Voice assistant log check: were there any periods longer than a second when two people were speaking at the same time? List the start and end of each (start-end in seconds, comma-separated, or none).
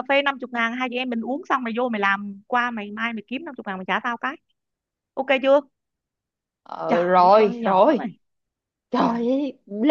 6.9-8.1